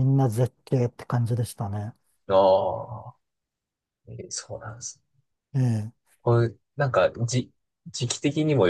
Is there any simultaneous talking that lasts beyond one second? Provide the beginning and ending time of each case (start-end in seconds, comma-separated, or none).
none